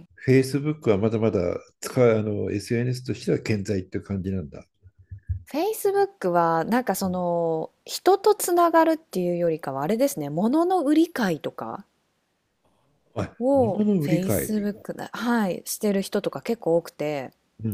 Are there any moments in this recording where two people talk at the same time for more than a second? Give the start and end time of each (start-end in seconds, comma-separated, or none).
13.4-14.7